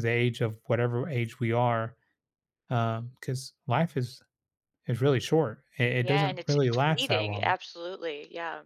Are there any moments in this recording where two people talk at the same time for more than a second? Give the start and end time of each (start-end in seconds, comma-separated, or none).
6.0-7.5